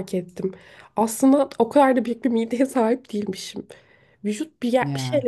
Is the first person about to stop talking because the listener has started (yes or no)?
no